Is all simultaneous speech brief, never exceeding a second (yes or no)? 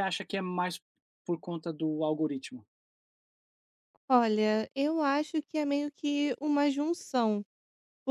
yes